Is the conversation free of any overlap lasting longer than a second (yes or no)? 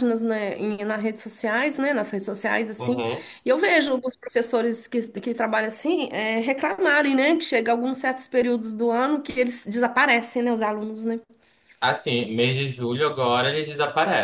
yes